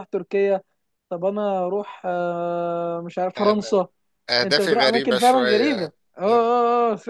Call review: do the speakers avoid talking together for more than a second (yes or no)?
no